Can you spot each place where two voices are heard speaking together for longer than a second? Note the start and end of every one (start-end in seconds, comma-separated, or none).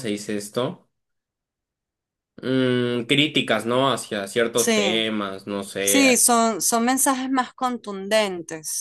none